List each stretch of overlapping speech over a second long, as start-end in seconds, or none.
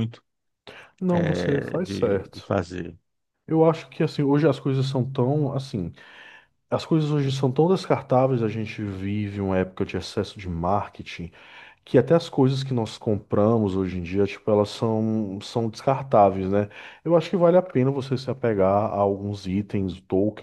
1.1-2.5